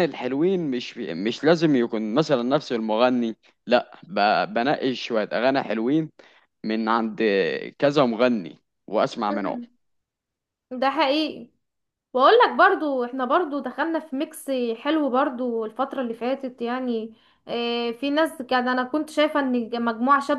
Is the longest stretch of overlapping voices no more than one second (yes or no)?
yes